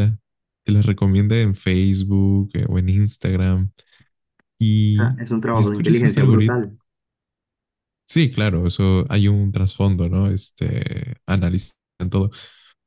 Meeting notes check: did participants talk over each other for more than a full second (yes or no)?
yes